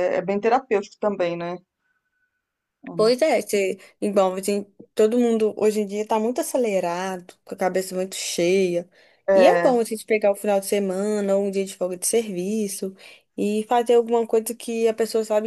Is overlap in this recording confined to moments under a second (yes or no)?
yes